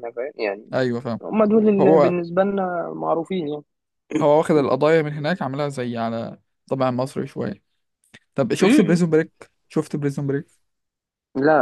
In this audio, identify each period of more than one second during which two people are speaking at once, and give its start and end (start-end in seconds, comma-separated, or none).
none